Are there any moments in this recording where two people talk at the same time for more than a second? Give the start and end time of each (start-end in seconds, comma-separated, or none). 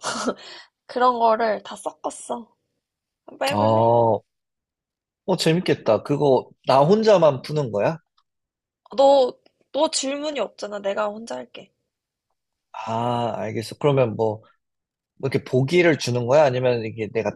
none